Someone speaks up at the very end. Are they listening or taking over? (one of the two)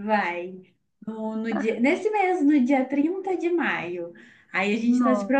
listening